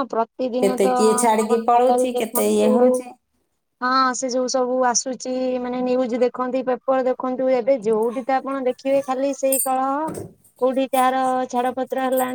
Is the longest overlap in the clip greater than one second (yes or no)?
yes